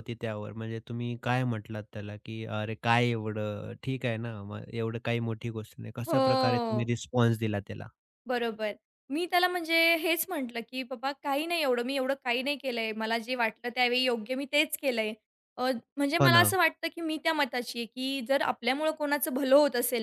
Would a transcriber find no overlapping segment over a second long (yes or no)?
yes